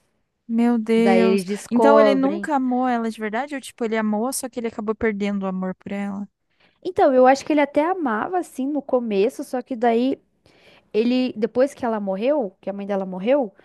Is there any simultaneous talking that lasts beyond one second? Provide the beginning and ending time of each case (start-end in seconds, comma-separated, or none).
0.9-2.5